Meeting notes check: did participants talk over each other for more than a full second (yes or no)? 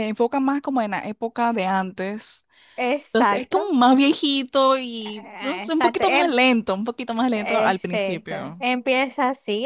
yes